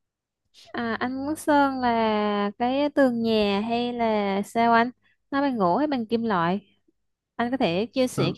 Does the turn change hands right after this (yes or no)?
no